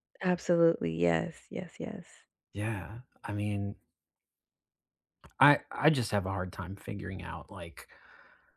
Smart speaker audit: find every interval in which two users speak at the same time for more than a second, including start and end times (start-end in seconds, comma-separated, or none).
none